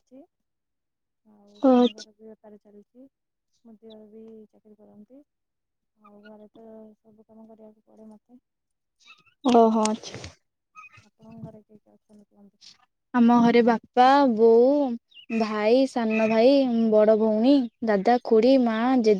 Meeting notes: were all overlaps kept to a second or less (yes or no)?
yes